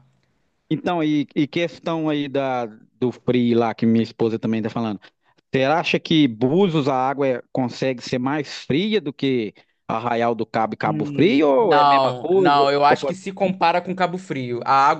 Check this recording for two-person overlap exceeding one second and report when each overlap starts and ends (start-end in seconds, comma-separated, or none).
10.8-13.2